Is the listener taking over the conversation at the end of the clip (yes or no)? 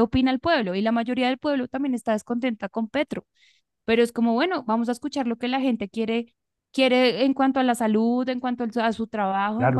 yes